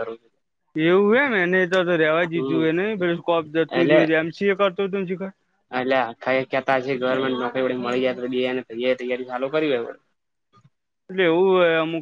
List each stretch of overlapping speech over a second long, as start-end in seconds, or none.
none